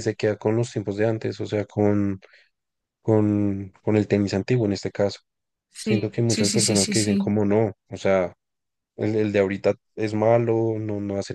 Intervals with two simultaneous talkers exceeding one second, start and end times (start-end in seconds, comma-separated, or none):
5.8-7.3